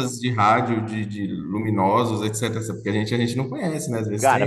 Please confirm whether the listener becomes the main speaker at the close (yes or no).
yes